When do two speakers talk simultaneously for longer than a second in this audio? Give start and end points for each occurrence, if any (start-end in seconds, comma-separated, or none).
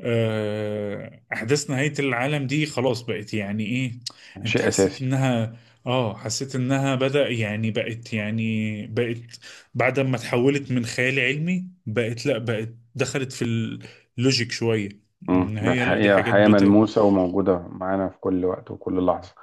15.3-16.8